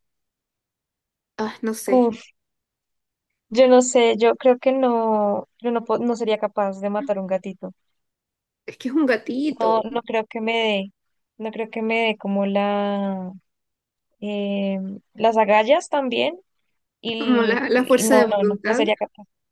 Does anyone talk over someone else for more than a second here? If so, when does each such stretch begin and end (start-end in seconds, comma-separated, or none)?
17.2-18.8